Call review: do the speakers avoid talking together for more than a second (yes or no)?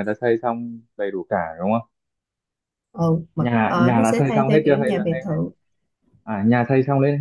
no